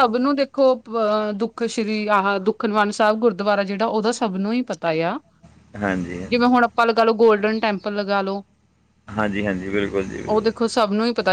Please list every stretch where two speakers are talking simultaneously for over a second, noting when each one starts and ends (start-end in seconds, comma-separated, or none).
none